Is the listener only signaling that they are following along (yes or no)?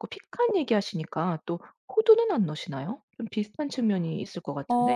no